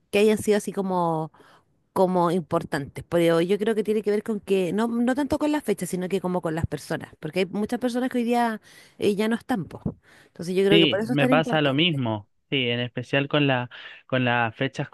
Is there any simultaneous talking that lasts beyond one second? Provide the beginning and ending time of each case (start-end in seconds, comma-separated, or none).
10.7-12.0